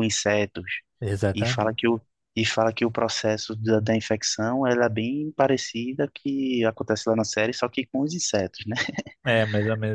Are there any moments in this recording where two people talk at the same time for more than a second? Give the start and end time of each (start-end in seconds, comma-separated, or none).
none